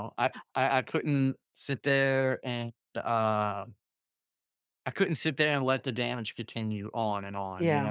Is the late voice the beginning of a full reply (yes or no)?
yes